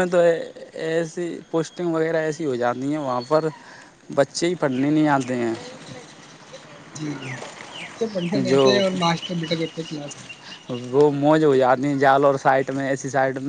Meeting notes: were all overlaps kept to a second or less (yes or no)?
yes